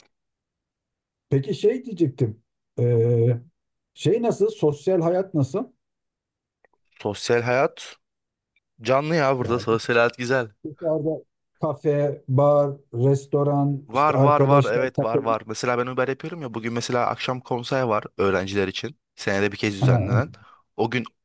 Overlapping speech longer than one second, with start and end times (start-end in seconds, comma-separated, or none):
13.9-15.4